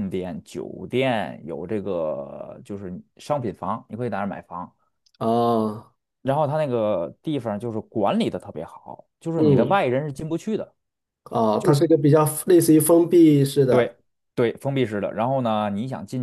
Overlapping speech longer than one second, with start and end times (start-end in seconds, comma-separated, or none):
none